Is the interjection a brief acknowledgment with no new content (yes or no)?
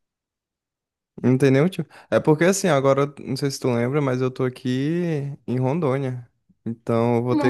yes